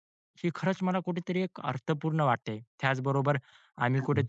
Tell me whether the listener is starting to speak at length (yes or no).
no